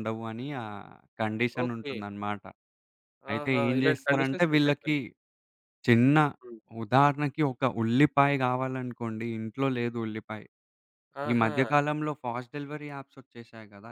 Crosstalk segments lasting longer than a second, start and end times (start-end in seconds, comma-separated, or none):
3.4-5.0